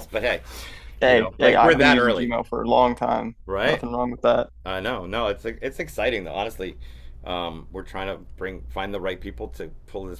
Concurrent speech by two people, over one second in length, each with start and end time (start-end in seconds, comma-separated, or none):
1.1-2.4